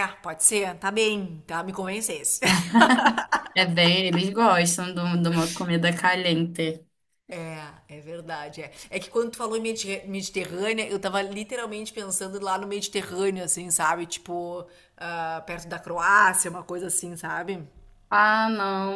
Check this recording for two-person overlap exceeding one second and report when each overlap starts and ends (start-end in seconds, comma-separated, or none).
none